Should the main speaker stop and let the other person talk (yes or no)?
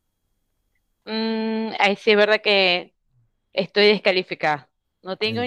no